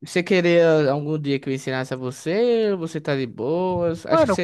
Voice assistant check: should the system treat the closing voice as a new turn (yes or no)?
no